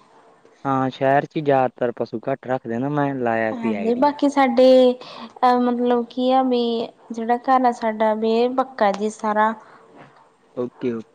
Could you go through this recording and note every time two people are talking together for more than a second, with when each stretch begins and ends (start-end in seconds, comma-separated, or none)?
none